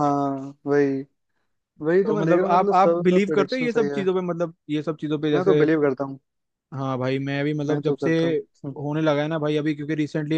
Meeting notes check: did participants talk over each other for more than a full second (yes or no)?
yes